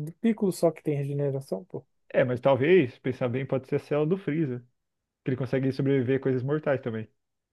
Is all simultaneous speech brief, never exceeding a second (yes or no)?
yes